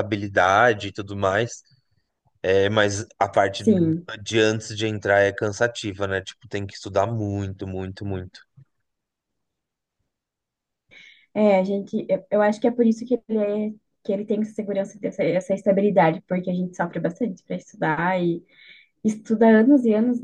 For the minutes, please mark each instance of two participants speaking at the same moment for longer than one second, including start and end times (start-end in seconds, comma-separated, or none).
none